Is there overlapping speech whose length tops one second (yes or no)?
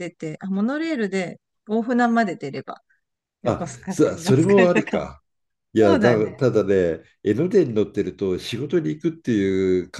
yes